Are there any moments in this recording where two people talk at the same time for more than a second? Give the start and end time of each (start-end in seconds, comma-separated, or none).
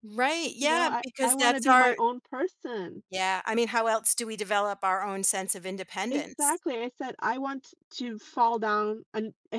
0.6-2.0